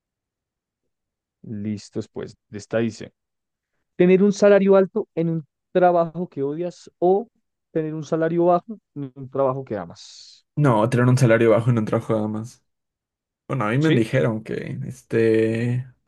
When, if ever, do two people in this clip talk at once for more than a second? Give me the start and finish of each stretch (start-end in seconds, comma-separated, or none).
none